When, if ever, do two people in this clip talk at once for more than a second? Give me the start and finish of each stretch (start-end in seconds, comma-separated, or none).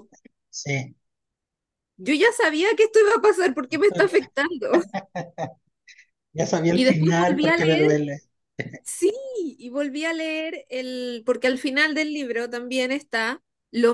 6.7-8.0